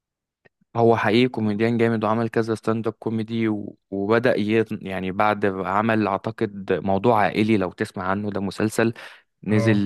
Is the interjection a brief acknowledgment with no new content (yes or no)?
yes